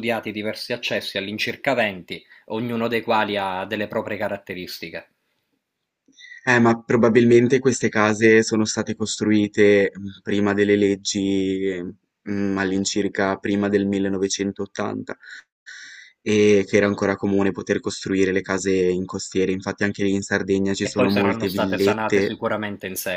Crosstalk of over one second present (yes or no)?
yes